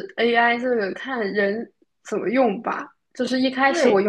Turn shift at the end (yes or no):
no